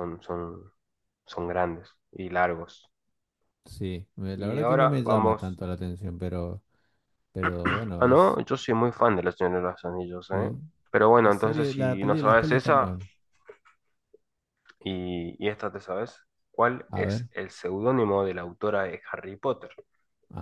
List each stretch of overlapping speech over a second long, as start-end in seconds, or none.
4.3-5.6, 11.2-12.9